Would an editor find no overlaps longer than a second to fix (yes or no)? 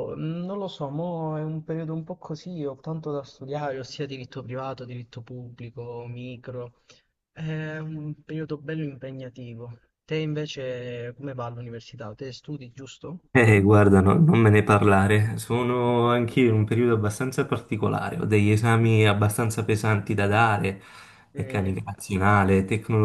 yes